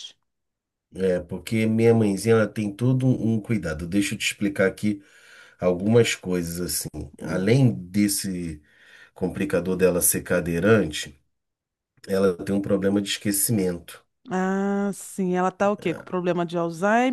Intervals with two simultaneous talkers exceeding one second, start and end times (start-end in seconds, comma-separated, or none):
none